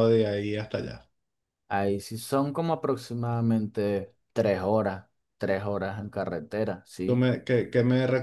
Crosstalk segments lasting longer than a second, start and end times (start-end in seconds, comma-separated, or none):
none